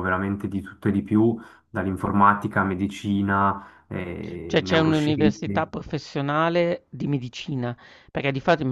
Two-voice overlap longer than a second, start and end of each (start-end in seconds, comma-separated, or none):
4.5-5.7